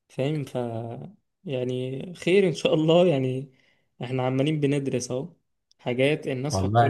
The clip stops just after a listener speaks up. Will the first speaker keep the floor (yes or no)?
yes